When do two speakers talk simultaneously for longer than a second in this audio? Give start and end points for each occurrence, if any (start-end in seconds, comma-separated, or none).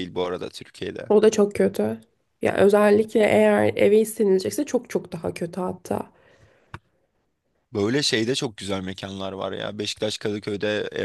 none